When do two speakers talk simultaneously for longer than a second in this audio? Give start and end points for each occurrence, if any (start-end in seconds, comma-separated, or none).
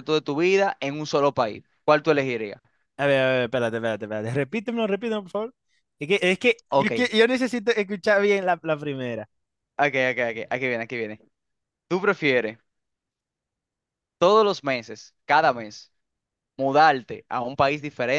none